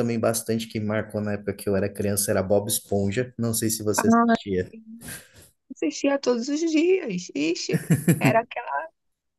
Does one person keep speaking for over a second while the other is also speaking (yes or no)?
no